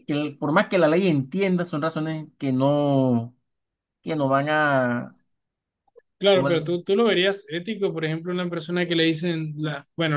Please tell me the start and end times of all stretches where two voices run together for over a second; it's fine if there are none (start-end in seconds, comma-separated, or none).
none